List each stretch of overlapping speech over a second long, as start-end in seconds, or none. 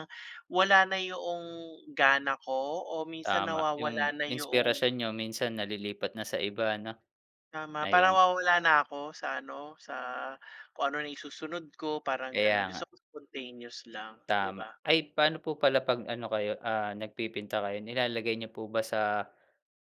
3.2-4.8